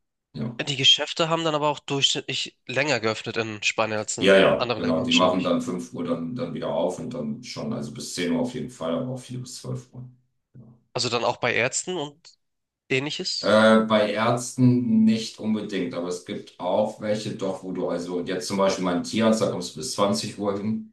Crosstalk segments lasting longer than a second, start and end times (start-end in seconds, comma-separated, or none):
4.2-5.6